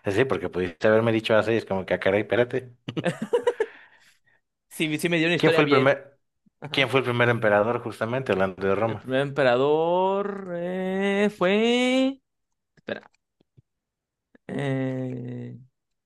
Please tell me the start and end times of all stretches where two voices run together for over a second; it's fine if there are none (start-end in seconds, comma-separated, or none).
none